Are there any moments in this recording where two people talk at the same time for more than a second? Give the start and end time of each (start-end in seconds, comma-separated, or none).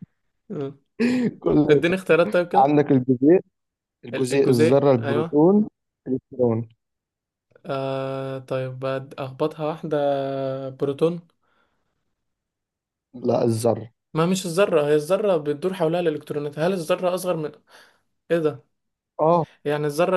4.1-5.4